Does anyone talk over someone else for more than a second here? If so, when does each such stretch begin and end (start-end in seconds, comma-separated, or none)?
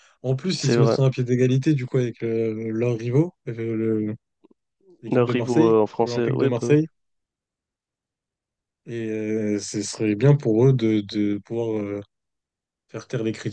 5.0-6.8